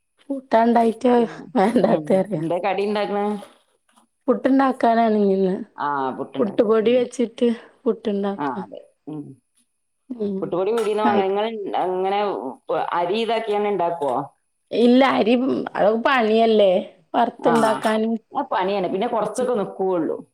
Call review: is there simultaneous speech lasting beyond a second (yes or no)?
no